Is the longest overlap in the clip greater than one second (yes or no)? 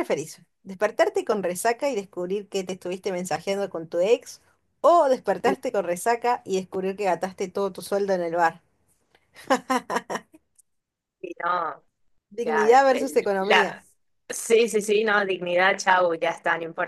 yes